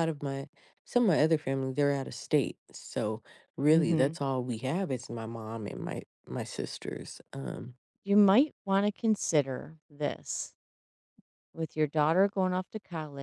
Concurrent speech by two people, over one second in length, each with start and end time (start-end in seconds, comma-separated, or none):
none